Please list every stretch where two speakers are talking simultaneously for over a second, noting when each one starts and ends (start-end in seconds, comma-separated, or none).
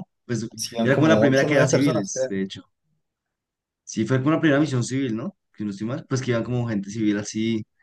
0.8-2.3